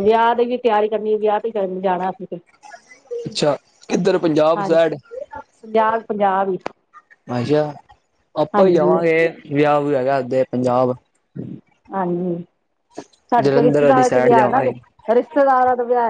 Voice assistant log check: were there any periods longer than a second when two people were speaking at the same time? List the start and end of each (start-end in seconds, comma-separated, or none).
13.4-14.6